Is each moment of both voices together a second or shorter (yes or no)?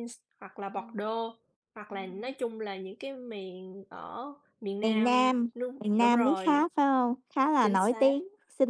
no